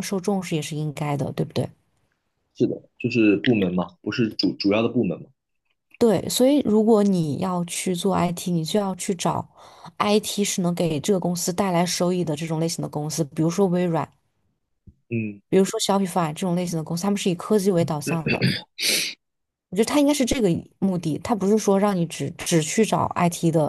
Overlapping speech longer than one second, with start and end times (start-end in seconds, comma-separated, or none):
none